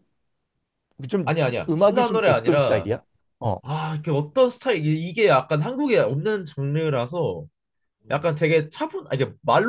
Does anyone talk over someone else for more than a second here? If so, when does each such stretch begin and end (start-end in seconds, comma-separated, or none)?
1.2-2.9